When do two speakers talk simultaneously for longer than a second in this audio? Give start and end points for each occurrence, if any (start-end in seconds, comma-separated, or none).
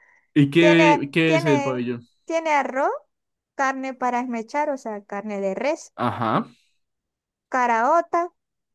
0.6-1.8